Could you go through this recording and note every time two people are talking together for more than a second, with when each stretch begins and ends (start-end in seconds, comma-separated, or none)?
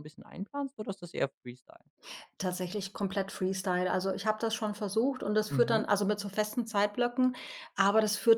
none